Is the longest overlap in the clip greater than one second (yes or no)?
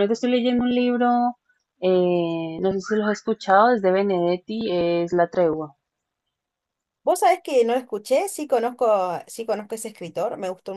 no